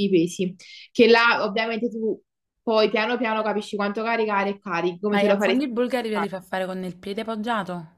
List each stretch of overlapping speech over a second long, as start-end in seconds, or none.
none